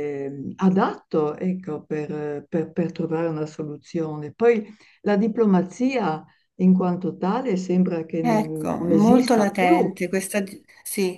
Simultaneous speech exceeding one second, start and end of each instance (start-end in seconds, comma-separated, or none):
8.2-9.8